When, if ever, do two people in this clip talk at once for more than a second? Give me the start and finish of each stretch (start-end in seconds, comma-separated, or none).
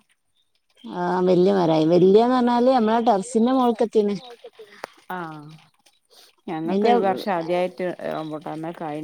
1.7-4.2